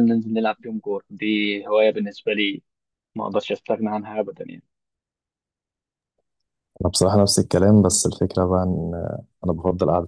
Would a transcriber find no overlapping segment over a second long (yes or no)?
yes